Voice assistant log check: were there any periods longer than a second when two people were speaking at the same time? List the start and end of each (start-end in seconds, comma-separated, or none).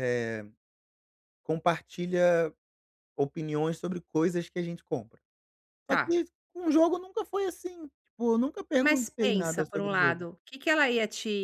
8.8-10.3